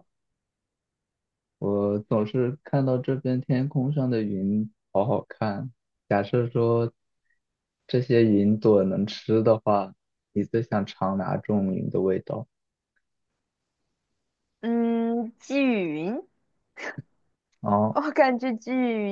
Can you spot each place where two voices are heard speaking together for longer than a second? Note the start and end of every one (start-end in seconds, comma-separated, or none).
none